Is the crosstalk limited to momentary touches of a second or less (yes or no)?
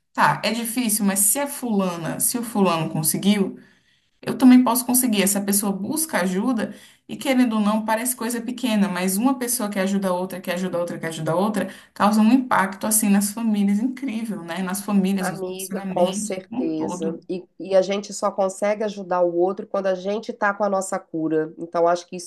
no